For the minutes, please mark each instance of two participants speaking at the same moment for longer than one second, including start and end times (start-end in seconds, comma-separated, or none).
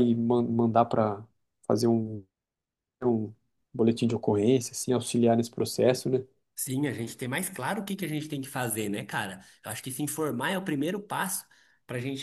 none